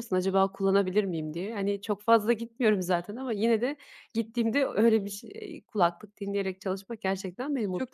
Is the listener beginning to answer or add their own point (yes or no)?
yes